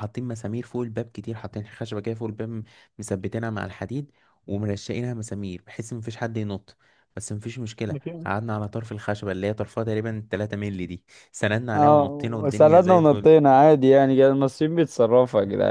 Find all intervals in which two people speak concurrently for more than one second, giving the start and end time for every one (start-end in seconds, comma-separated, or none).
11.7-13.3